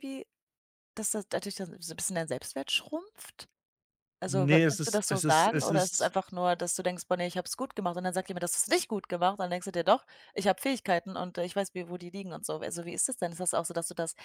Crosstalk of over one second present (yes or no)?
yes